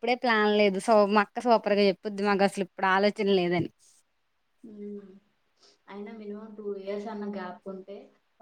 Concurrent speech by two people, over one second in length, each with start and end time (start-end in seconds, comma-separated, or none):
none